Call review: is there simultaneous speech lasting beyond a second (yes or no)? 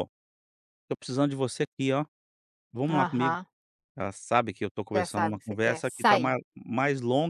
yes